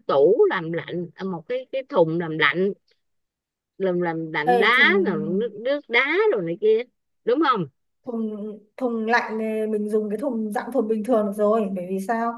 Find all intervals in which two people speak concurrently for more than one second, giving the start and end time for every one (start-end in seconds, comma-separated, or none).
none